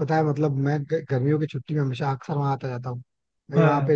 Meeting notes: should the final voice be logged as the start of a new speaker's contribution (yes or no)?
no